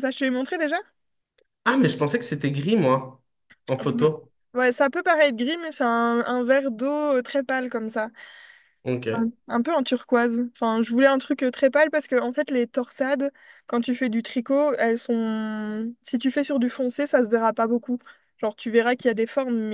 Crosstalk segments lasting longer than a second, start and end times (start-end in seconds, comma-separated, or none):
none